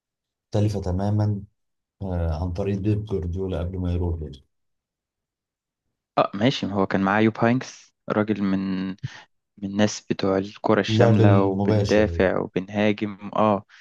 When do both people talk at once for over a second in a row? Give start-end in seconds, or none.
10.9-12.2